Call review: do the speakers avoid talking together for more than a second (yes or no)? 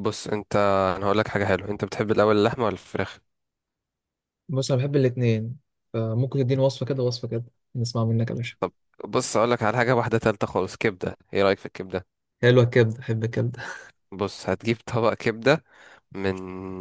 yes